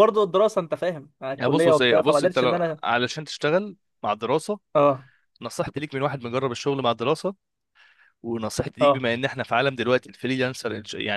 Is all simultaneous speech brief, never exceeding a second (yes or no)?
no